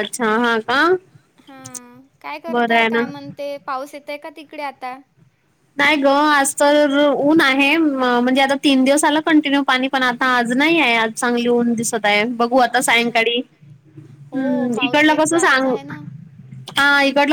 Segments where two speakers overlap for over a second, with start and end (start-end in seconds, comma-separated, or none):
14.3-15.7